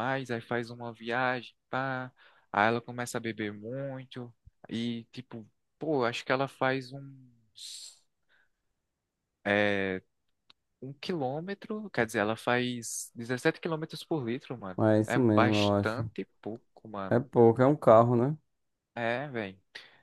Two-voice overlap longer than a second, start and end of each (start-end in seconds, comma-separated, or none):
14.8-16.1